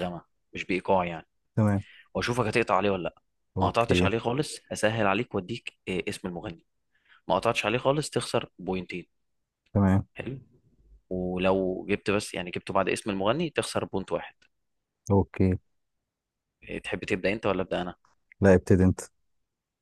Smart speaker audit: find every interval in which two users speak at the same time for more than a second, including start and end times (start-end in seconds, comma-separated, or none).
none